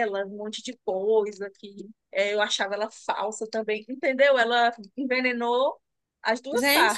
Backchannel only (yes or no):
no